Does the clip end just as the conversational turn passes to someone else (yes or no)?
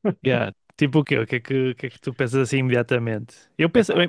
no